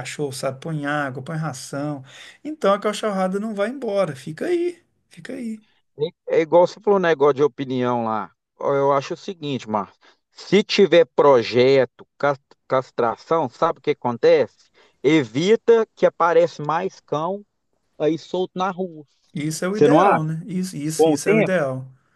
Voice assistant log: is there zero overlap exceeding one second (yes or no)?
yes